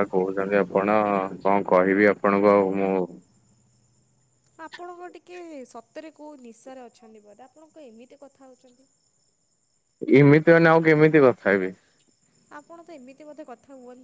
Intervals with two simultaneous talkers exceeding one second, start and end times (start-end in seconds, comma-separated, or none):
none